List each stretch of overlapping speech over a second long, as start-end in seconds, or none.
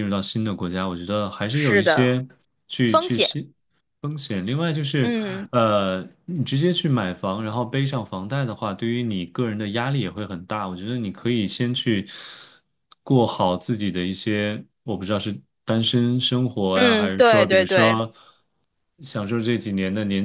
16.7-18.0